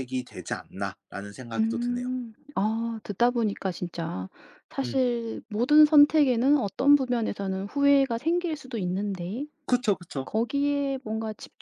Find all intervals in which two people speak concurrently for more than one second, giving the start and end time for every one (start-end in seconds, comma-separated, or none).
none